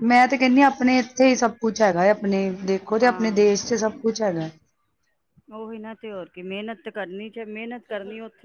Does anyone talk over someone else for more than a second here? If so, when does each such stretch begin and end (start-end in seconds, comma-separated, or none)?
none